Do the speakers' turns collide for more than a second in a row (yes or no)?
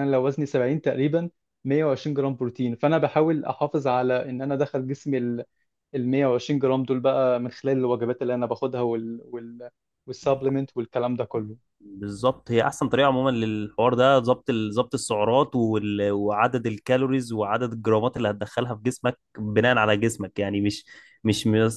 no